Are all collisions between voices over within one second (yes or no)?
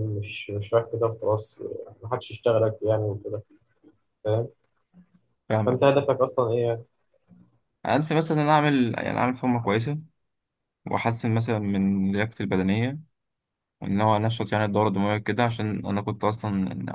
yes